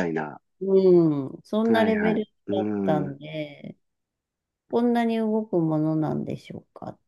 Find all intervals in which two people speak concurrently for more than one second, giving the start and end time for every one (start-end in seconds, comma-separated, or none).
1.6-3.2